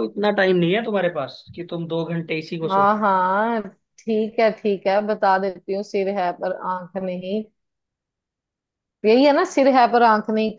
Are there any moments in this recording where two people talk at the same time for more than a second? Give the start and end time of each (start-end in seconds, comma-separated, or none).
none